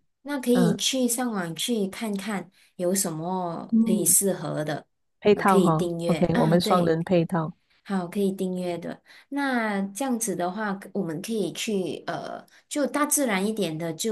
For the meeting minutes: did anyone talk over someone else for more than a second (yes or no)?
yes